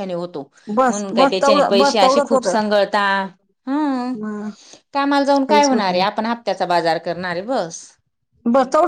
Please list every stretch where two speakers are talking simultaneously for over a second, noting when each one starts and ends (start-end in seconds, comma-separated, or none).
0.9-2.5